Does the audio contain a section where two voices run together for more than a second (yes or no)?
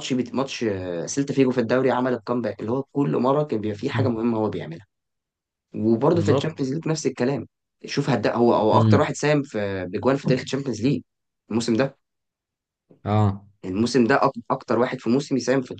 no